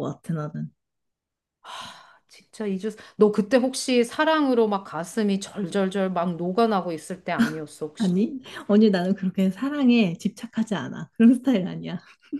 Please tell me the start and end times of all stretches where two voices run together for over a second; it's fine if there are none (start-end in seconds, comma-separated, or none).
none